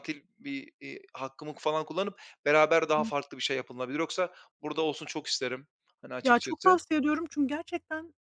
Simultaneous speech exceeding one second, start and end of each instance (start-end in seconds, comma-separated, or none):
none